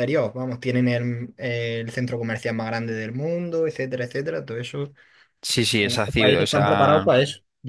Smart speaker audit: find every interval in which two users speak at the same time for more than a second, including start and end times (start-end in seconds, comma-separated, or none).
5.8-7.1